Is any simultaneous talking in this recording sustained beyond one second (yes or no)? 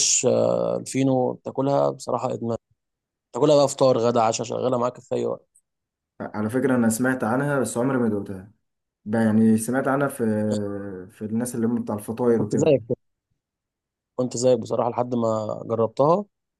no